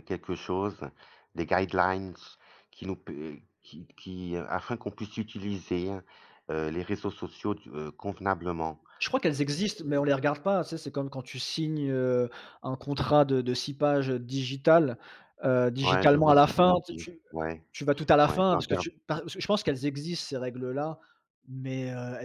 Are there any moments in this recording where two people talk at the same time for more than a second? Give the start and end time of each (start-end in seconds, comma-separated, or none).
15.8-17.2